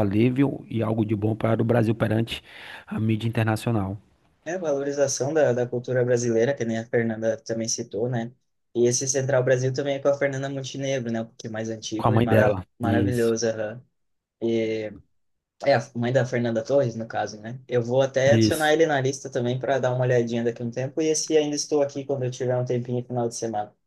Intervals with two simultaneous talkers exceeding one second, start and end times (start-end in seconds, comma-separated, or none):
11.9-13.3